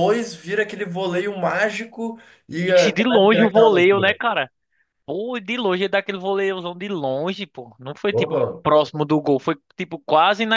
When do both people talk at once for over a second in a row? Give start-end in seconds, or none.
2.6-4.2